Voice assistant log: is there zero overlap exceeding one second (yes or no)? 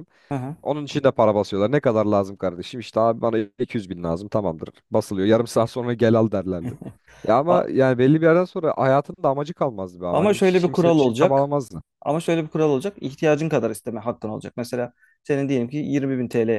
no